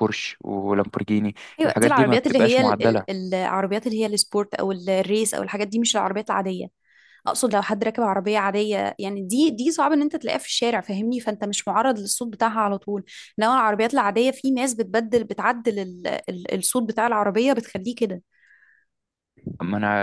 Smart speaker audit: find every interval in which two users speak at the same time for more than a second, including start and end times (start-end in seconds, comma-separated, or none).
1.6-3.2